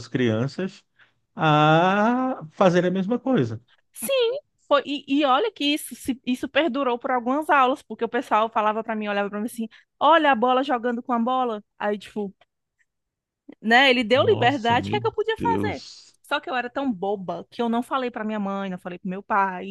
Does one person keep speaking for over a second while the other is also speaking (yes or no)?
yes